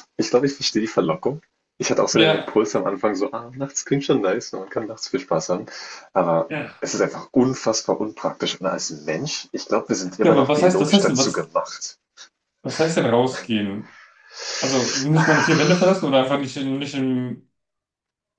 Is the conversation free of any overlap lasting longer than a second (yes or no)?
no